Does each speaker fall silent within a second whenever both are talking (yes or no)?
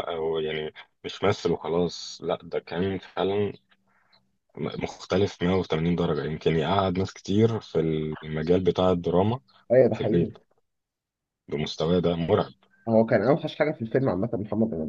yes